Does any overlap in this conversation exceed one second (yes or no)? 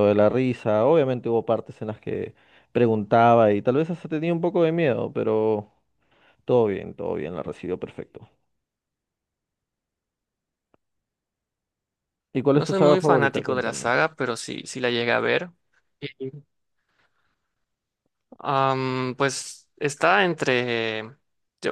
yes